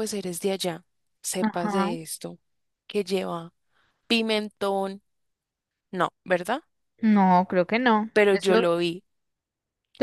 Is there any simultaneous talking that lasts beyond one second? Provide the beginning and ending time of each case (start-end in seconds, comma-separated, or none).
none